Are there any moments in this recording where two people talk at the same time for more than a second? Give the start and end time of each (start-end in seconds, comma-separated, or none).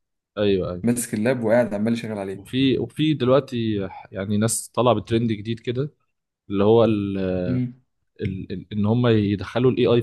none